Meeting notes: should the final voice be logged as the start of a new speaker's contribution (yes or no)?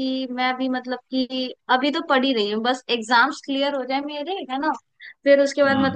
no